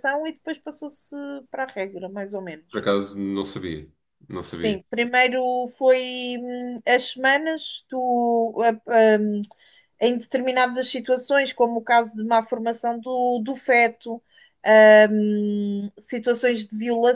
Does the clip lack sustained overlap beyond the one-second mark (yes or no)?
yes